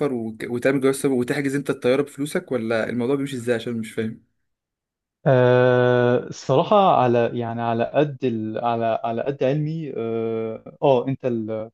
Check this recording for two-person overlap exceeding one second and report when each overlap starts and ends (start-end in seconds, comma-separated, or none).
none